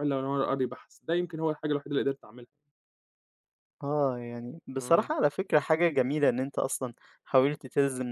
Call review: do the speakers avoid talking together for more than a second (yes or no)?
yes